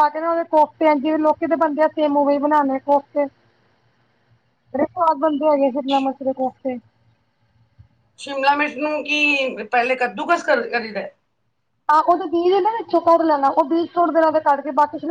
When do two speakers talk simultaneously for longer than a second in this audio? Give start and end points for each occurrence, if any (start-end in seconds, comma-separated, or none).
none